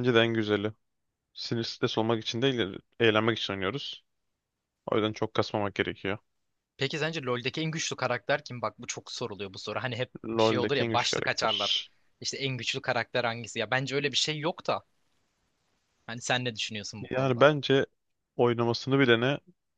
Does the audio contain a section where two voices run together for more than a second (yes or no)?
yes